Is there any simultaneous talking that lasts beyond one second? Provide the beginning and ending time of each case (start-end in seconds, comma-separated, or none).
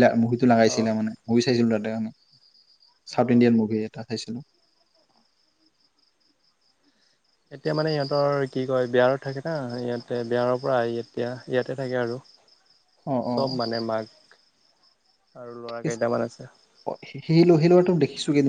none